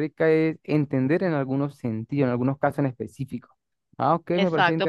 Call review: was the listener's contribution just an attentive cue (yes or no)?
no